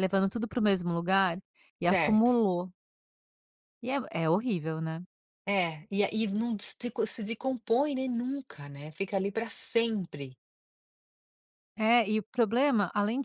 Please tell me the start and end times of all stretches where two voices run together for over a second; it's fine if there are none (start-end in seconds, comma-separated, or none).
none